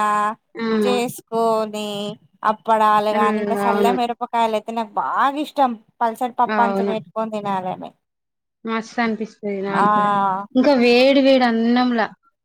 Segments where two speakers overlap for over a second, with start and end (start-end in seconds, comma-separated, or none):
none